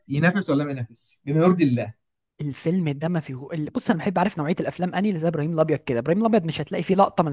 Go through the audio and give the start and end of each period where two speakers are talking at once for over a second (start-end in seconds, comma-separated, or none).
none